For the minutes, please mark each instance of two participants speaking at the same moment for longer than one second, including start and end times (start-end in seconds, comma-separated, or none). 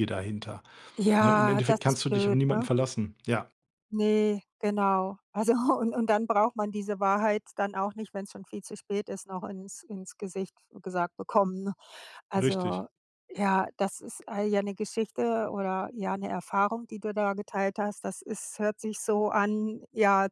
1.2-2.7